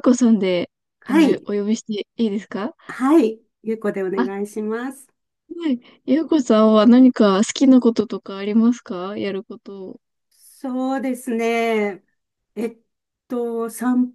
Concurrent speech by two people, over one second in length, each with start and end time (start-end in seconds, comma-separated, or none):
none